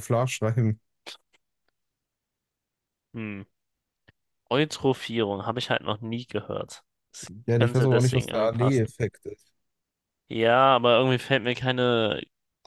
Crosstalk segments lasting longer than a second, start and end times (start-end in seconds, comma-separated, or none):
7.5-8.9